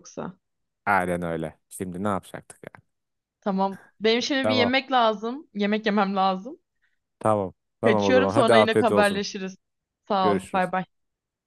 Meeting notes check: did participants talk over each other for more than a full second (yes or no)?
yes